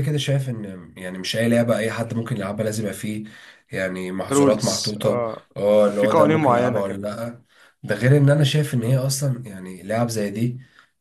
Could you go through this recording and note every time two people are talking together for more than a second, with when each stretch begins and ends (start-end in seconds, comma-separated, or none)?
4.3-7.0